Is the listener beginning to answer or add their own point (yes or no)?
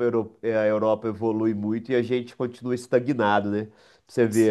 no